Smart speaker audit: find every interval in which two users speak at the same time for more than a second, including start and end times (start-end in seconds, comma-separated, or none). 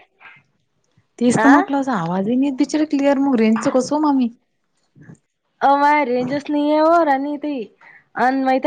none